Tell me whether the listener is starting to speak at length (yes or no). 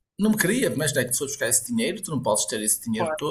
no